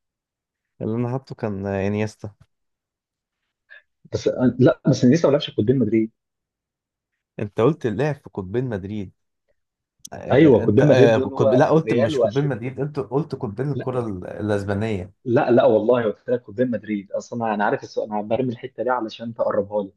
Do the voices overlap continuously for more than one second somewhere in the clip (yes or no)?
yes